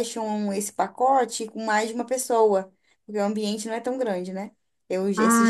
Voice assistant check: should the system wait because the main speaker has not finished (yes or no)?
no